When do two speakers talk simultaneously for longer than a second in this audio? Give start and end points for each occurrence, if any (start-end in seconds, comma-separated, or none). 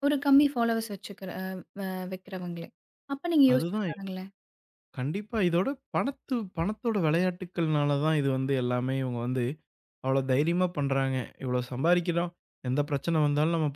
none